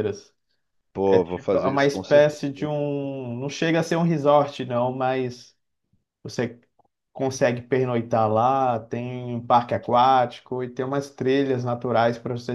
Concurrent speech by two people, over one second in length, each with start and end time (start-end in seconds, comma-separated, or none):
1.1-2.4